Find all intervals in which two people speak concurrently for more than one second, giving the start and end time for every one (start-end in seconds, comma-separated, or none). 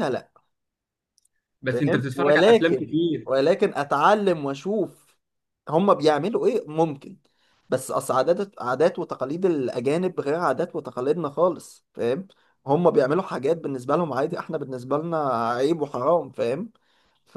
1.7-3.3